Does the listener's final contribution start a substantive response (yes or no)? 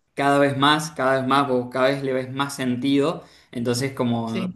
no